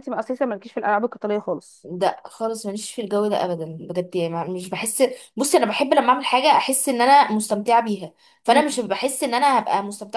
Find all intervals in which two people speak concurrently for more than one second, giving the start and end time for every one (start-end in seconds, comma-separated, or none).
none